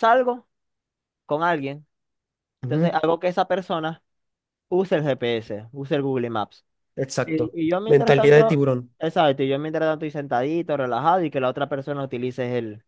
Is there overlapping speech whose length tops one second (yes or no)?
yes